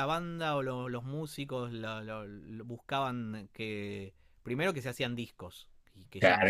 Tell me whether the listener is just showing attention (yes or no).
no